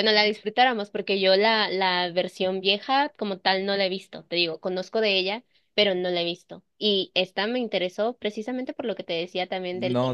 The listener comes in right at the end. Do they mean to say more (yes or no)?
yes